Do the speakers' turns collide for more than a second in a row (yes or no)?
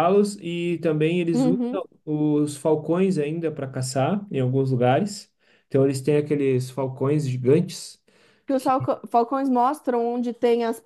no